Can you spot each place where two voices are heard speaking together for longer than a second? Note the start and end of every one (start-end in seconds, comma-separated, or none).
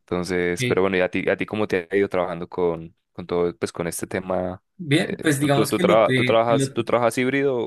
5.0-6.8